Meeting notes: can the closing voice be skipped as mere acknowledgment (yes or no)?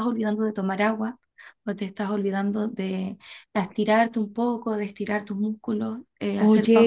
no